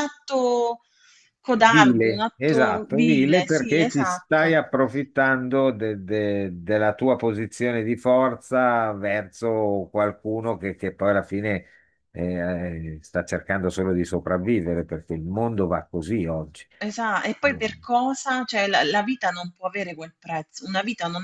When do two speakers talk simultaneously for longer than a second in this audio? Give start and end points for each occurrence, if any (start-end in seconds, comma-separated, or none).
1.6-4.6